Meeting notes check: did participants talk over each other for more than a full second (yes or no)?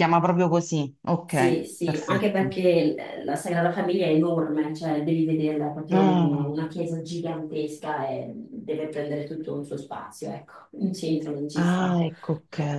yes